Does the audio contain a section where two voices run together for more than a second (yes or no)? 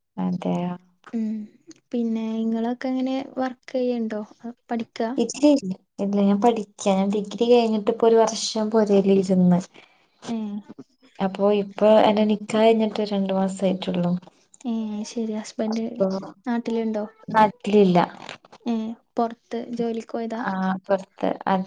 no